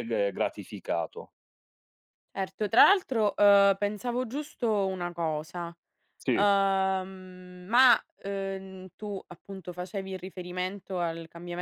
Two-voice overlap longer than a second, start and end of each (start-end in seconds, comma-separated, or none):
none